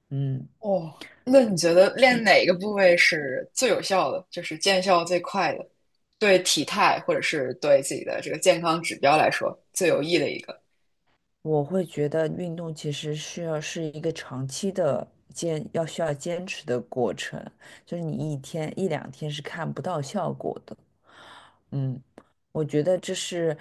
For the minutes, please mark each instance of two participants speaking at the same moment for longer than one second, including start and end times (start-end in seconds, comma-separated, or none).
none